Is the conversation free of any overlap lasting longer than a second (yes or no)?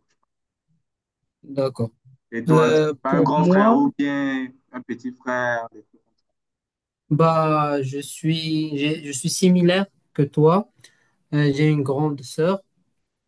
no